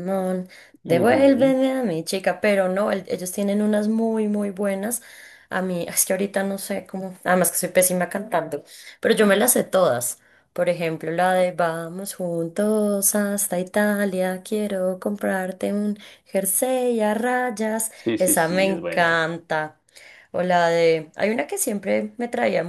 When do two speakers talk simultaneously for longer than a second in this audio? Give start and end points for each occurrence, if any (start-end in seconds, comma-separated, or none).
17.9-19.3